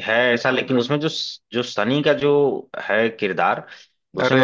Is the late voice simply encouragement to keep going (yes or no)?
yes